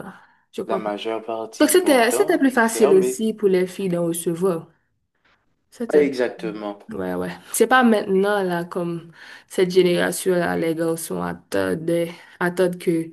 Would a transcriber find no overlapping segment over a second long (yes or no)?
no